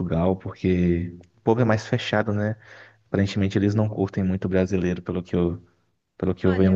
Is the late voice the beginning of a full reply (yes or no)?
yes